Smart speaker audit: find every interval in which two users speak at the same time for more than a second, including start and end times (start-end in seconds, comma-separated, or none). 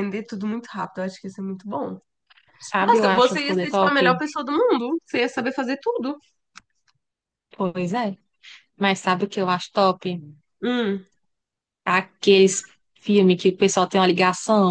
2.8-4.2